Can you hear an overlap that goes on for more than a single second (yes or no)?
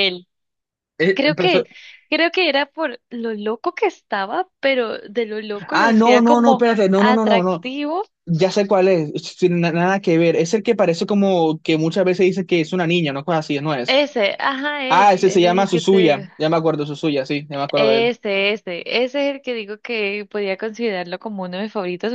yes